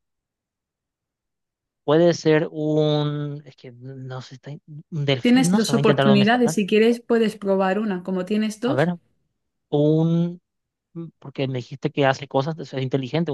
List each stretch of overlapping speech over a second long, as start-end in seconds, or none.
5.2-6.5